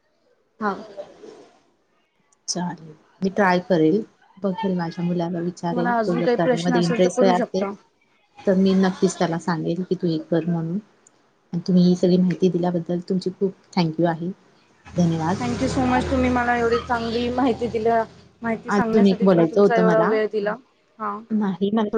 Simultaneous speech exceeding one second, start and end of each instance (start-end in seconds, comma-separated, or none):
5.5-7.6, 18.8-20.1